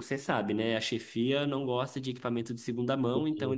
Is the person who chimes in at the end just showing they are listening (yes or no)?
yes